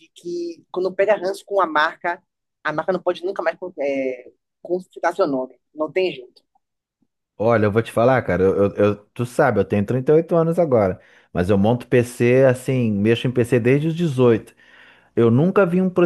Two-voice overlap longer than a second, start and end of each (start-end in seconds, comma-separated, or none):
none